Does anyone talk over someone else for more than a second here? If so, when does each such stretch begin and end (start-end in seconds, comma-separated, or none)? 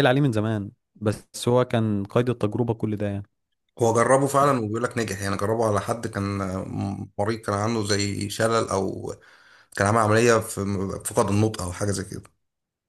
none